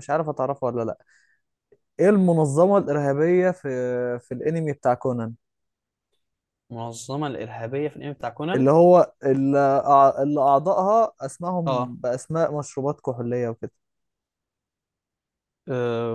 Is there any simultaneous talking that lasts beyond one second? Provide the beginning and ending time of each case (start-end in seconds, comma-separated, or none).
none